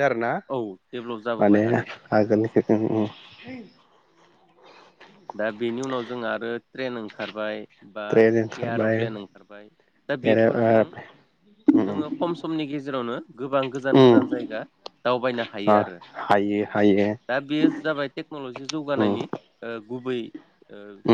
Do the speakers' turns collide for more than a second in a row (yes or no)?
no